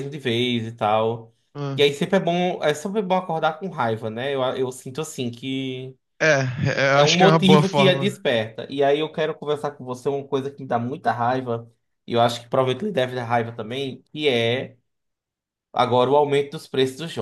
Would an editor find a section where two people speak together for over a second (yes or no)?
yes